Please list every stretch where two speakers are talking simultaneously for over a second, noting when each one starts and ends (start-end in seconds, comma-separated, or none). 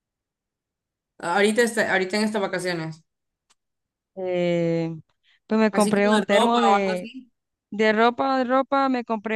5.7-7.1